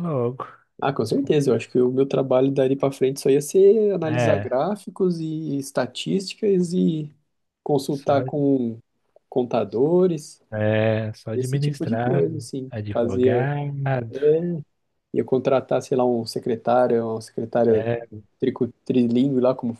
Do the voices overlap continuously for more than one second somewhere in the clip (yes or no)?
yes